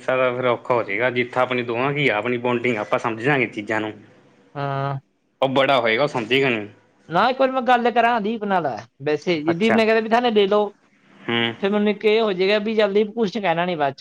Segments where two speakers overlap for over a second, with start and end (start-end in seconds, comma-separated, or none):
none